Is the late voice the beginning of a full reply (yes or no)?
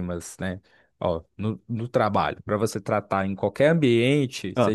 no